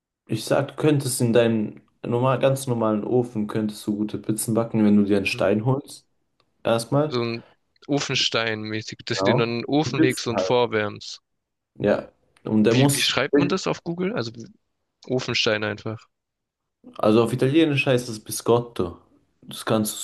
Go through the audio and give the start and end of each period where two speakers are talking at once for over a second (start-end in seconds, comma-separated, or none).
9.1-10.6